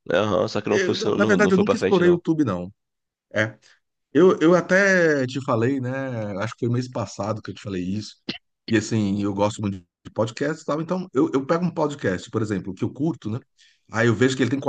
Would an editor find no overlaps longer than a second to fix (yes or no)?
no